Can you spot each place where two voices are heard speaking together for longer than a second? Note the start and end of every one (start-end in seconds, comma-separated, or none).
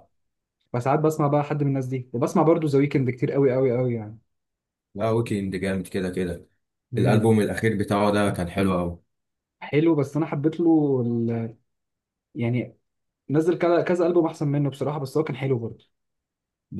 none